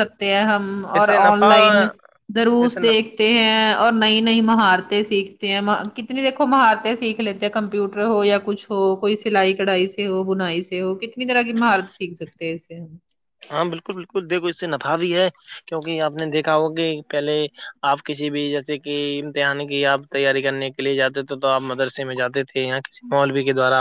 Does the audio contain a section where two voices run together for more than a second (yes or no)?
no